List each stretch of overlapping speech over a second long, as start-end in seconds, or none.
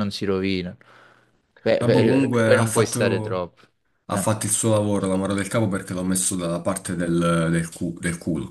1.8-3.4